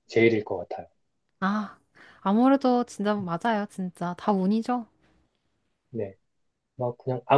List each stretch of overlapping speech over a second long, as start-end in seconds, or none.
none